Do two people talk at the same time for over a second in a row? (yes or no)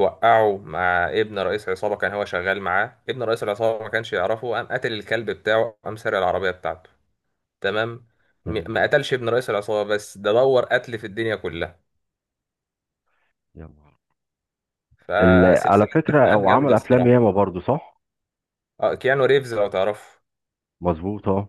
yes